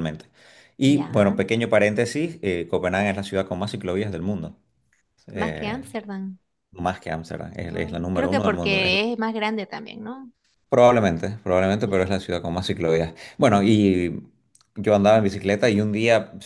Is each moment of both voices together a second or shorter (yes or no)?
no